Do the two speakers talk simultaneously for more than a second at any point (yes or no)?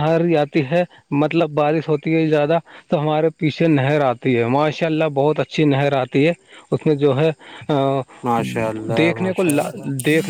no